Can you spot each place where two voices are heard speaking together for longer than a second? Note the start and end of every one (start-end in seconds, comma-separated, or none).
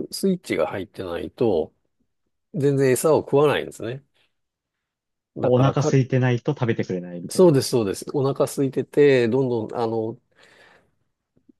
none